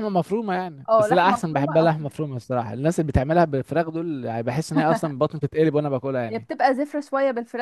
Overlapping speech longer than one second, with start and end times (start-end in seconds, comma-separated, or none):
0.9-2.1